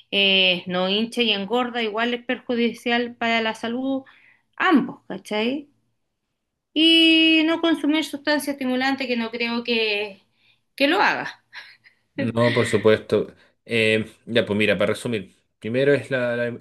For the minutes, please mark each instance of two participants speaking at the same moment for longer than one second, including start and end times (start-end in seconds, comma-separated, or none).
none